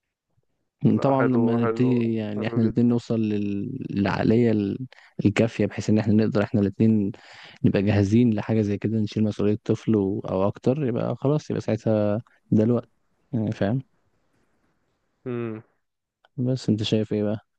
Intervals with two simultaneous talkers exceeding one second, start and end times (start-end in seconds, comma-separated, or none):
1.0-2.9